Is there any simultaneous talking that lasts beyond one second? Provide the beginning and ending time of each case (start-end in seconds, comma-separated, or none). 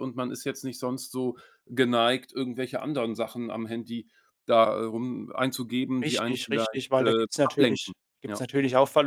6.0-8.5